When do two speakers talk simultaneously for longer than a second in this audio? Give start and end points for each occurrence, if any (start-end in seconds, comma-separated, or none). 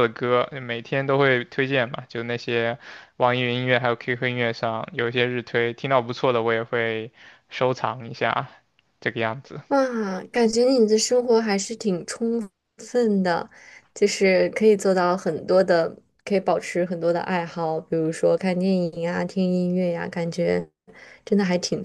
none